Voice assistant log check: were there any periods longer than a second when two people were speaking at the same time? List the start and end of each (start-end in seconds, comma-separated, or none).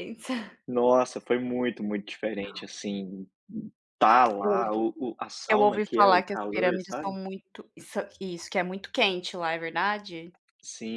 5.5-7.1